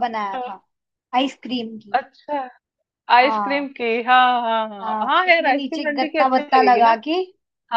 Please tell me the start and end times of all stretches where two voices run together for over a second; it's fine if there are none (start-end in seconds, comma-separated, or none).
4.8-7.0